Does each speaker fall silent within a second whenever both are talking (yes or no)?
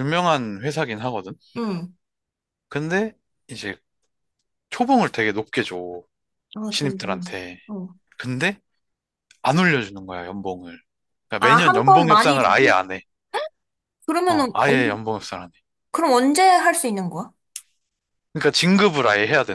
no